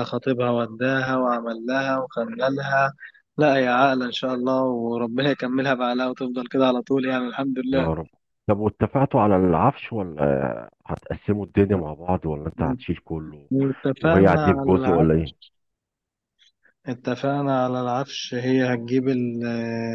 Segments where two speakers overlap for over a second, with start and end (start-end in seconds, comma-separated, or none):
14.0-15.3